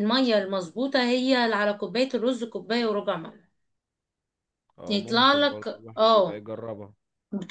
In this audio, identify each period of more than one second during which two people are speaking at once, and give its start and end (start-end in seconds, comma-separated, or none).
4.9-6.4